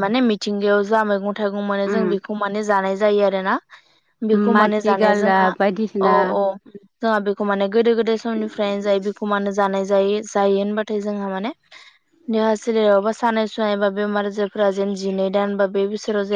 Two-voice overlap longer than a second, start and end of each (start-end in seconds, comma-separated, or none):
4.5-6.1